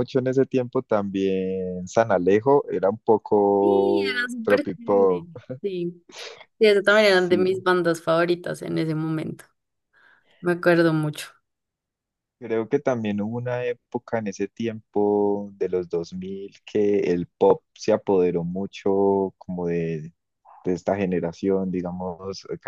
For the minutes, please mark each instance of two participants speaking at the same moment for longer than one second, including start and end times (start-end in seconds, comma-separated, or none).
3.6-5.3